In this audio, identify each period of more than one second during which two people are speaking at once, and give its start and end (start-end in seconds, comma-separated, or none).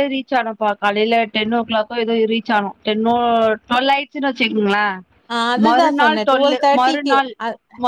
5.7-7.3